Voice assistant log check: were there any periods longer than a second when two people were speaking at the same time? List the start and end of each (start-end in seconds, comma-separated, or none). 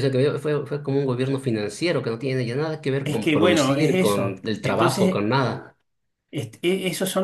3.0-5.2